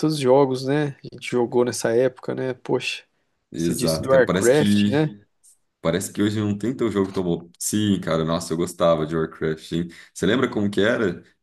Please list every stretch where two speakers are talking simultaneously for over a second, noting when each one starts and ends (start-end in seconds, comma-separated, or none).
3.5-5.1